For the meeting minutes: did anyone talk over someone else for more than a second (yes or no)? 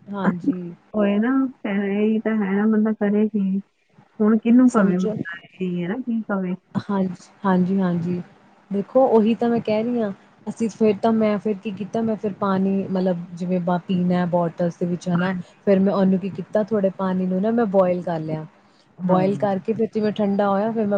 no